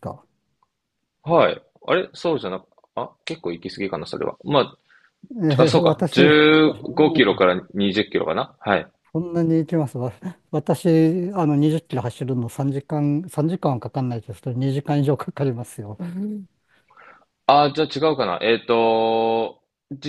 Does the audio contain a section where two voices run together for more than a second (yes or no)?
yes